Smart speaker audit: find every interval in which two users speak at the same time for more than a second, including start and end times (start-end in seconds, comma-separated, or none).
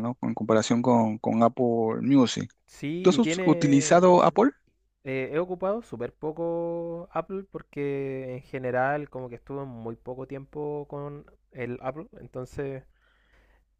3.0-4.2